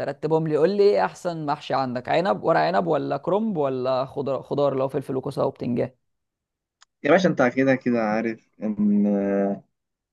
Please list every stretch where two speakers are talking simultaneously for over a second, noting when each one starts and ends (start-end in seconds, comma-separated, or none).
none